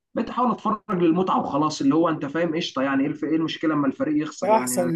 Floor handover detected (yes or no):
yes